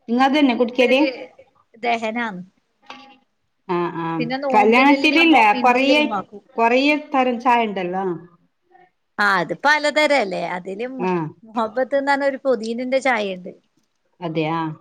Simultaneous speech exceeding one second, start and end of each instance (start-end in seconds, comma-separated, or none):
4.5-6.0